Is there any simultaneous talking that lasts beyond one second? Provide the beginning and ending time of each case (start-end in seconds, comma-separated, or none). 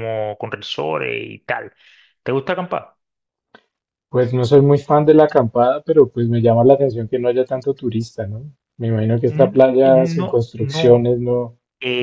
9.2-11.1